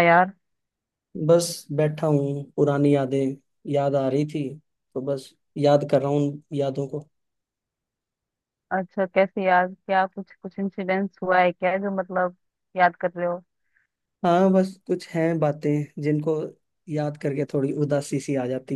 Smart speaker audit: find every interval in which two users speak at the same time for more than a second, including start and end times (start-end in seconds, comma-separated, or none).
none